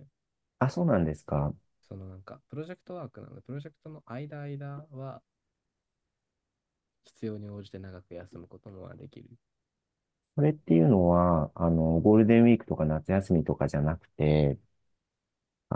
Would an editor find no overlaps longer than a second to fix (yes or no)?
yes